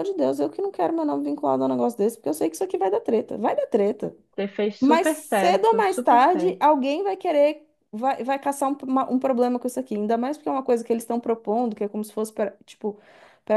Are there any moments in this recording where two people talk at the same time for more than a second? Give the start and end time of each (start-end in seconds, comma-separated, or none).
4.8-6.6